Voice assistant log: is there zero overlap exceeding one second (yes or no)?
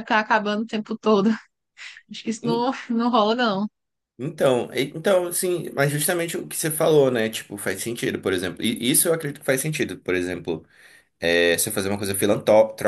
yes